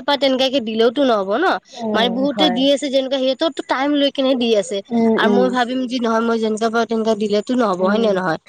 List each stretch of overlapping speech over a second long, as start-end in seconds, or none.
none